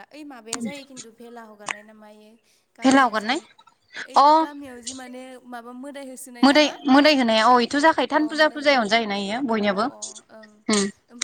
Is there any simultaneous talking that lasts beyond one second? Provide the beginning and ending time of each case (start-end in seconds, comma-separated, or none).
8.1-10.1